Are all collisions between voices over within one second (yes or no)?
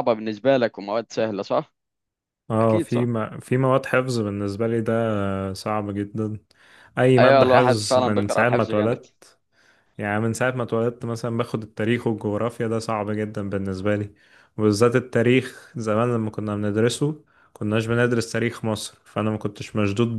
no